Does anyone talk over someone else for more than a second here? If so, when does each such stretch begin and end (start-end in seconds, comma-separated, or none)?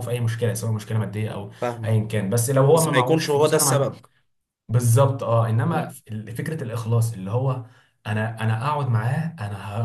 2.7-4.0